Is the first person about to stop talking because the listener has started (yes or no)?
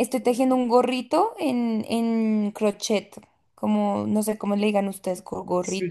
yes